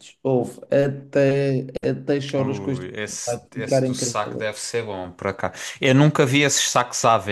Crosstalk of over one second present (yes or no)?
yes